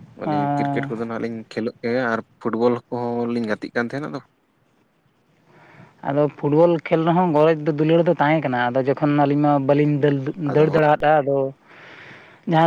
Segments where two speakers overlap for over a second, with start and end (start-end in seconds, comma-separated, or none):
none